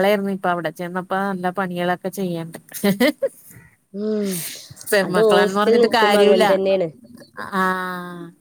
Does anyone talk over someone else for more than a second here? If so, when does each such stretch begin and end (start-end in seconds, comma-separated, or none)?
5.1-6.4